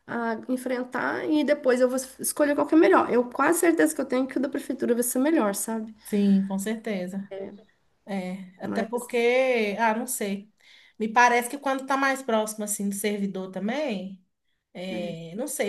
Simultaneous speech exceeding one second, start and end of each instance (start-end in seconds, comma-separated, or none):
none